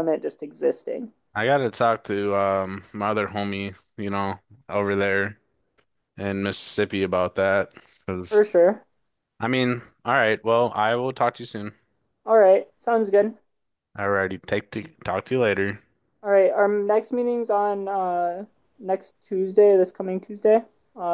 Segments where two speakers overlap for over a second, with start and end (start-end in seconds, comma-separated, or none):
none